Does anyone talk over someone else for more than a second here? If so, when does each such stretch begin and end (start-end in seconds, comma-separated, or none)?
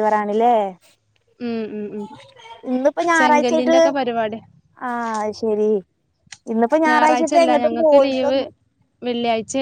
6.9-8.4